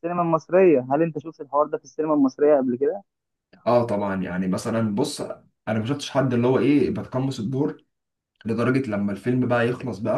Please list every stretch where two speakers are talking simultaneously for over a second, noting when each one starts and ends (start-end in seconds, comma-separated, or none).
none